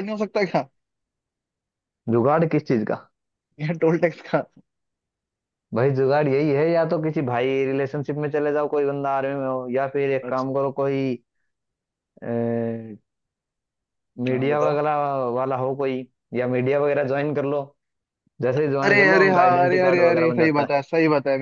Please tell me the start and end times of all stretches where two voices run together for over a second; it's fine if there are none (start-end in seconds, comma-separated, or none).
18.8-20.7